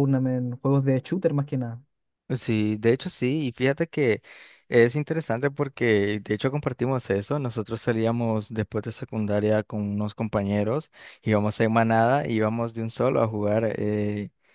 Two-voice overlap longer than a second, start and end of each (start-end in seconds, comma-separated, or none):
none